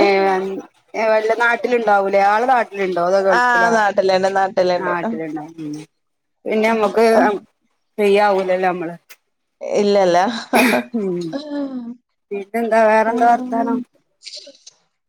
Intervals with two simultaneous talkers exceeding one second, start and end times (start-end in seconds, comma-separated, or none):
none